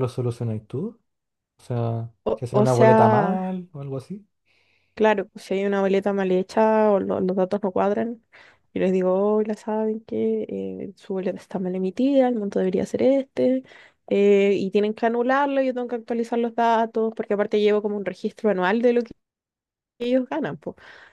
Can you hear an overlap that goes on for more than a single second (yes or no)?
yes